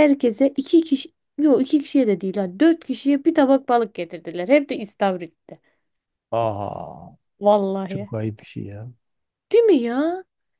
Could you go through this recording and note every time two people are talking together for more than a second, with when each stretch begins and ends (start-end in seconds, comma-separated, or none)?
none